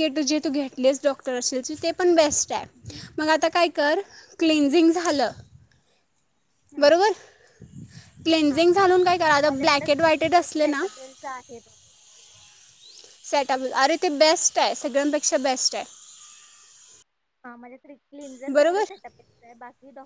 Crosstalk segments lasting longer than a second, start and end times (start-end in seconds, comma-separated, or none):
9.5-10.8